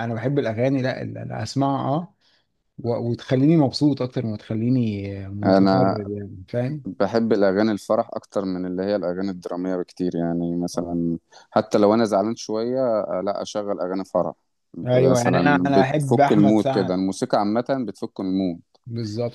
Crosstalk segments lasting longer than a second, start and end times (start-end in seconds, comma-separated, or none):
14.9-17.0